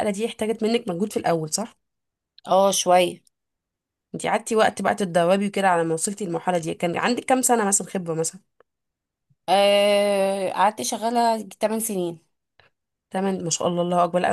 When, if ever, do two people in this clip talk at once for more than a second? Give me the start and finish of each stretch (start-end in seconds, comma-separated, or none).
none